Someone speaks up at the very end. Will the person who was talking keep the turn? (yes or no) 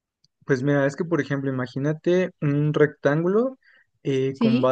yes